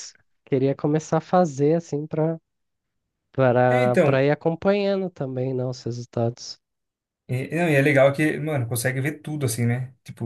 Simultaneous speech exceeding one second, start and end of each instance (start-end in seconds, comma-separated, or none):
none